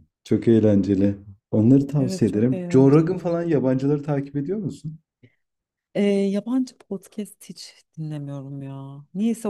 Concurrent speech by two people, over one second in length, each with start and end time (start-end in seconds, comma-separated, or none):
2.0-3.3